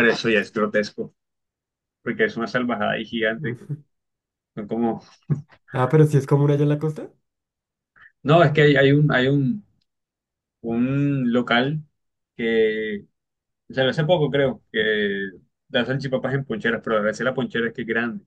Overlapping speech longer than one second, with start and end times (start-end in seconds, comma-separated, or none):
none